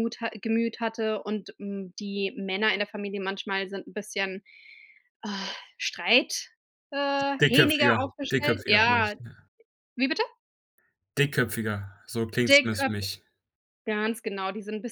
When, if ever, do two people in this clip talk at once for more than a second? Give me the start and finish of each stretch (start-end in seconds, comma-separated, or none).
7.4-9.1